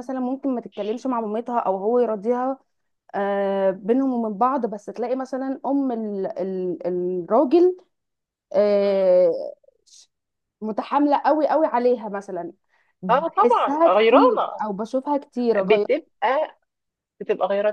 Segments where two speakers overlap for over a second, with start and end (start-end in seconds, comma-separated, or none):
13.1-14.6